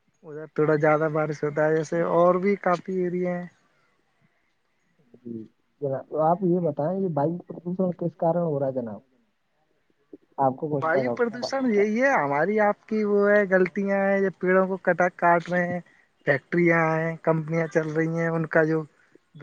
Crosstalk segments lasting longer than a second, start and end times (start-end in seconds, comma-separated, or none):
none